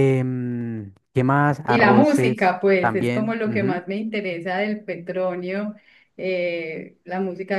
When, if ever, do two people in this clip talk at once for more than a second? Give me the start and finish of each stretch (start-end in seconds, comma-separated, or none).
1.7-3.8